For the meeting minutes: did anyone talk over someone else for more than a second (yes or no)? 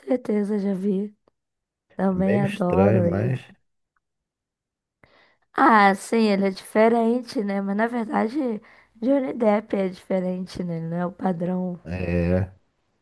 yes